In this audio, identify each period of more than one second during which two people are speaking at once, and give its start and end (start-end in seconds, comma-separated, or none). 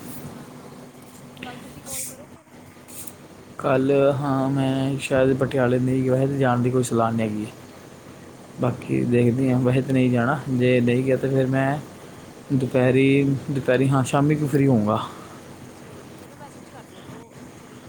none